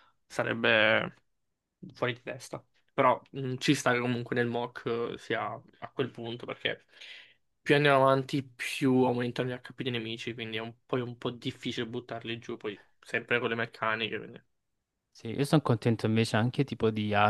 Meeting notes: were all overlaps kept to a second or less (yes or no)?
yes